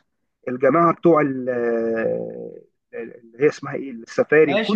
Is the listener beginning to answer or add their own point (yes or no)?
yes